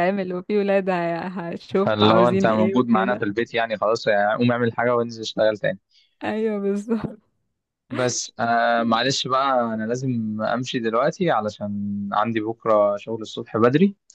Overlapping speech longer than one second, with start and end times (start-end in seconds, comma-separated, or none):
1.8-3.2